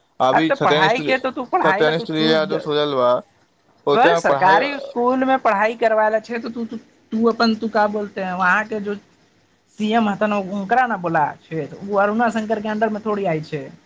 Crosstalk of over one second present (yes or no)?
no